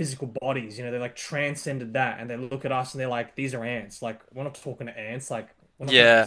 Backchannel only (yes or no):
yes